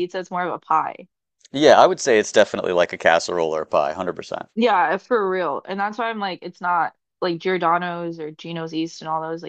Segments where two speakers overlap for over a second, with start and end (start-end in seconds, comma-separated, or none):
none